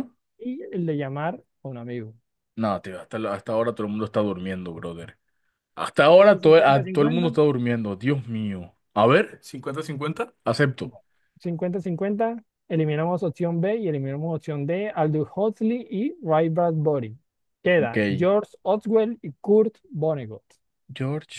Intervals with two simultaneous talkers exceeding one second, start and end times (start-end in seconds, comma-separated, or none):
6.1-7.3